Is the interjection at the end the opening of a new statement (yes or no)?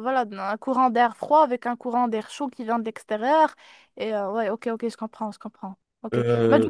no